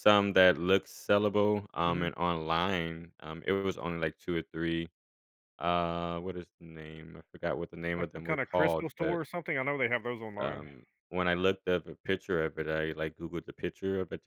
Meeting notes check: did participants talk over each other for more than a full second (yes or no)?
yes